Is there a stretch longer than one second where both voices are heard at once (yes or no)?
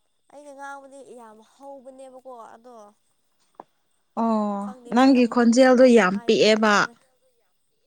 yes